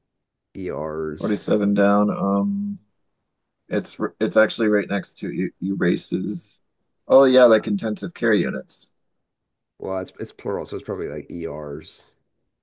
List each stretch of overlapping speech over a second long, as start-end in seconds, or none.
none